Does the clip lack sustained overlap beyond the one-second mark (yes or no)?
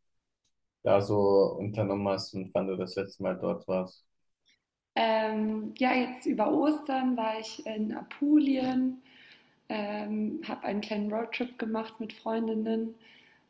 yes